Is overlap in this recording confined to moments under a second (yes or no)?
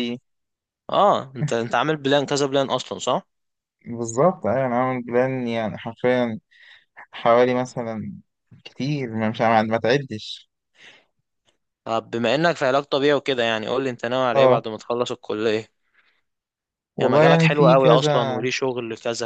no